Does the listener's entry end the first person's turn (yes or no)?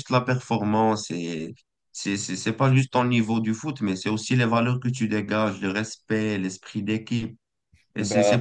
no